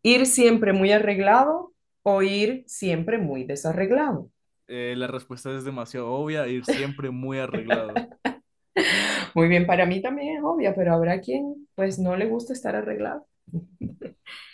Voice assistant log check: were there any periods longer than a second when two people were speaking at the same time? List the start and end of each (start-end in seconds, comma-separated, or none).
none